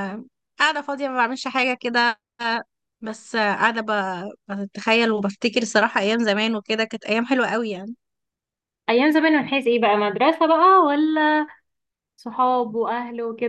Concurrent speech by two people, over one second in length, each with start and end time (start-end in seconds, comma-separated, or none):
none